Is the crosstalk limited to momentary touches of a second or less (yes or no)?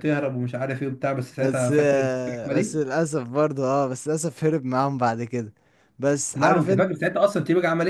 no